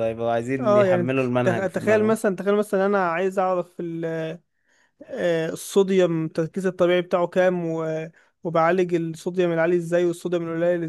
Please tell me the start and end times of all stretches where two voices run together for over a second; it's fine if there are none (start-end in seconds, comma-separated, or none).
0.6-2.2